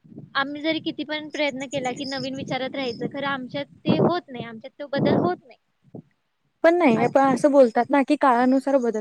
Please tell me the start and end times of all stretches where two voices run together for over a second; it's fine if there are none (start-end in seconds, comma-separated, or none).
none